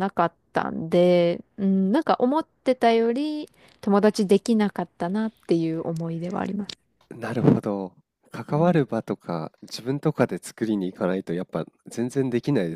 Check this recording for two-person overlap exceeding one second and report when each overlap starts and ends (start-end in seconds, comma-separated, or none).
none